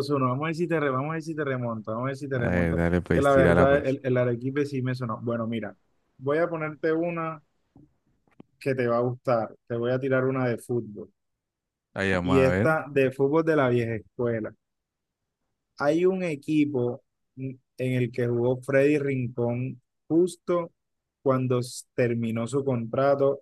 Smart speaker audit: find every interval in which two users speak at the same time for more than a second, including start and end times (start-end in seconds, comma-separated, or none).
2.4-4.0